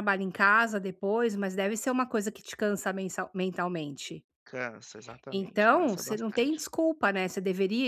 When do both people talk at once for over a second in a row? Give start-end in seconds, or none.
5.3-6.6